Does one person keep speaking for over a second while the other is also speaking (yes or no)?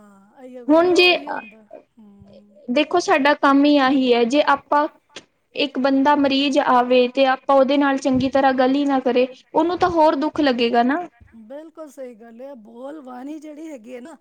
no